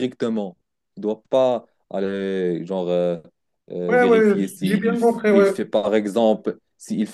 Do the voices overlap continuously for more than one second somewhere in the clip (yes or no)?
yes